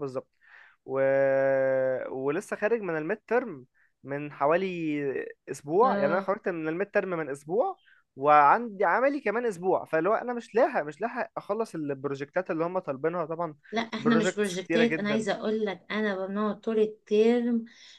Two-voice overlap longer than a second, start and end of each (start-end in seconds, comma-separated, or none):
14.0-15.2